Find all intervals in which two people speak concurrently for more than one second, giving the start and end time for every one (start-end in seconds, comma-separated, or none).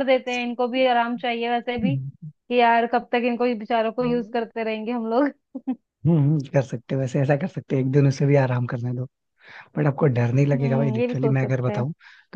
10.5-11.8